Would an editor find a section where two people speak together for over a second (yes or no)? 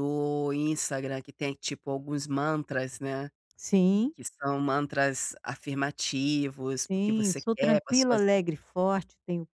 yes